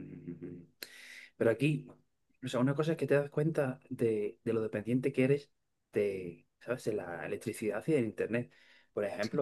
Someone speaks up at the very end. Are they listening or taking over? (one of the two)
listening